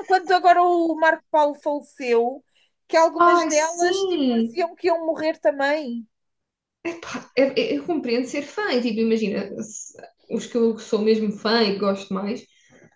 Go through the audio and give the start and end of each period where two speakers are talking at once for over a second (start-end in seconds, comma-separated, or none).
3.3-4.6